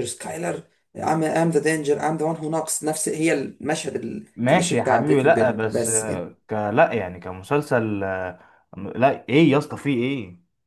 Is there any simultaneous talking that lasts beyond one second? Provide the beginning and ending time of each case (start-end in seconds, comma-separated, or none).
4.3-6.2